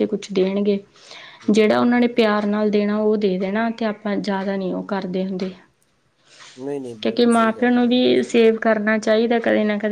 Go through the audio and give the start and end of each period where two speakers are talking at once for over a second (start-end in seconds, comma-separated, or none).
7.0-8.7